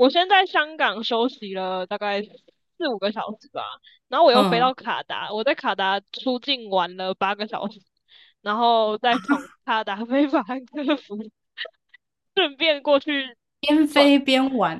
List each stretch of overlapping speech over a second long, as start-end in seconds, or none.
none